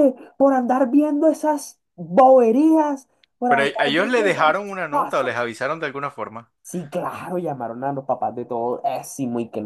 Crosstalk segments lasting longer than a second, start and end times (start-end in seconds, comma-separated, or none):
3.5-5.5